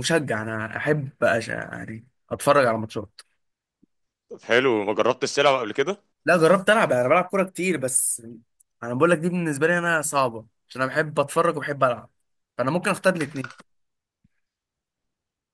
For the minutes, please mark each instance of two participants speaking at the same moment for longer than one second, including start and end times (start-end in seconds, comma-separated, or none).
none